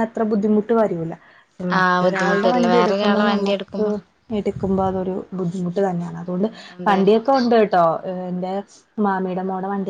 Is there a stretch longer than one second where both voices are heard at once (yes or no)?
yes